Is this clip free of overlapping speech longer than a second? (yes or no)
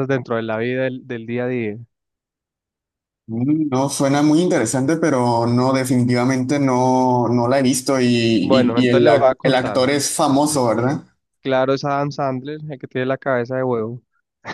no